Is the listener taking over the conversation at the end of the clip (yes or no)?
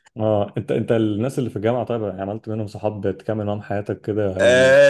yes